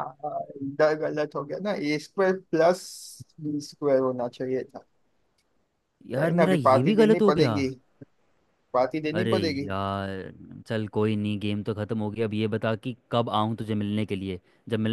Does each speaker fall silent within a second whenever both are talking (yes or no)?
no